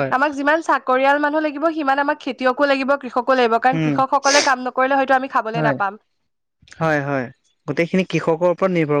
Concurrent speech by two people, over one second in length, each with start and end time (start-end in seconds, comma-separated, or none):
none